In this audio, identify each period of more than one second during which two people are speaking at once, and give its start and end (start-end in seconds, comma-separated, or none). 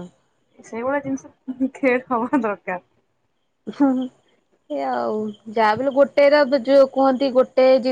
none